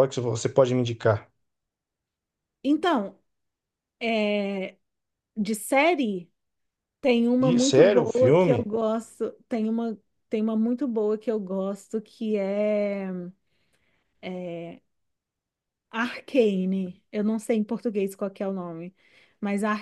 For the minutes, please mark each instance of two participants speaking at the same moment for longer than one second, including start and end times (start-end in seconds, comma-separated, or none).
7.4-8.7